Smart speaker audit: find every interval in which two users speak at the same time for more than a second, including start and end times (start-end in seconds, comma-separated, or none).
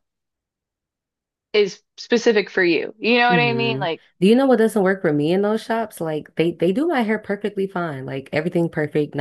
none